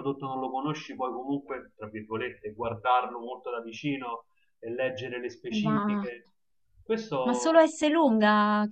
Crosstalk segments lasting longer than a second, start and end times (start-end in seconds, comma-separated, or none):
none